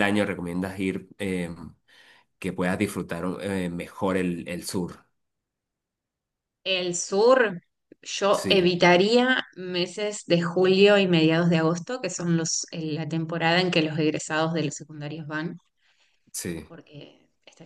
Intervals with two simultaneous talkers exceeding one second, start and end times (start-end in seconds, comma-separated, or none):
none